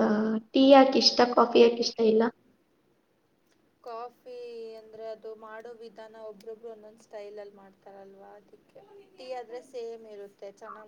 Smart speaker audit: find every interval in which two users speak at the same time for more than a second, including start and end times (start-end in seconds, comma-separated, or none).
none